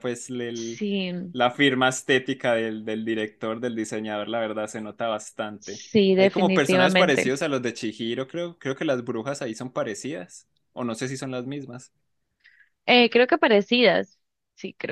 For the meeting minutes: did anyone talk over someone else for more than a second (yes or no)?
yes